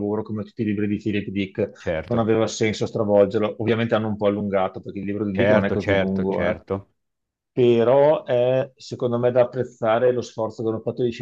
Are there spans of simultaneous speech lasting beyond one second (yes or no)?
yes